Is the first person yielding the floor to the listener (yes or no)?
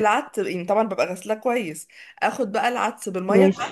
no